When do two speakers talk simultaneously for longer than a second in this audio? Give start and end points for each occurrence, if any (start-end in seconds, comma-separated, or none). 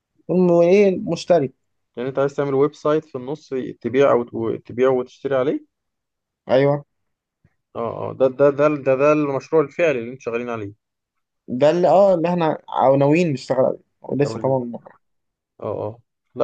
none